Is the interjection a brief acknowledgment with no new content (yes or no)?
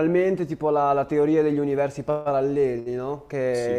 yes